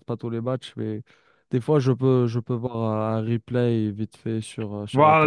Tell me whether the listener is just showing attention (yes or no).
no